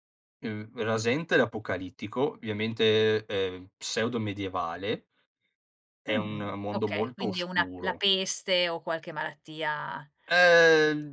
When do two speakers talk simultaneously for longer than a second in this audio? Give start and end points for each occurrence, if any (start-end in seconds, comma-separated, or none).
6.1-8.0